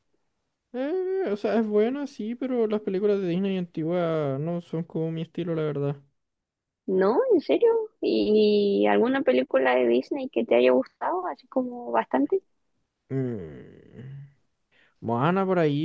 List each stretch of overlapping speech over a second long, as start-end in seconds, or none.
none